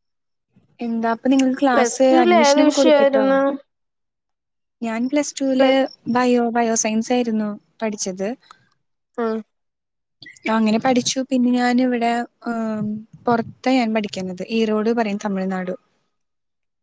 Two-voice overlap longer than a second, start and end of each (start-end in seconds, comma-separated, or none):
1.7-3.2